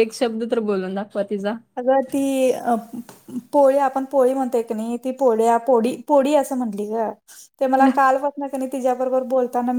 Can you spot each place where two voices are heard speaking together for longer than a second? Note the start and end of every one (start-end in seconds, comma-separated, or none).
none